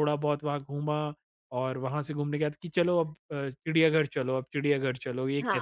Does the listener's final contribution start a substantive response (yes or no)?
yes